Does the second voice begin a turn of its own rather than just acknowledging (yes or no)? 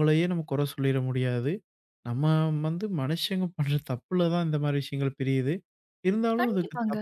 no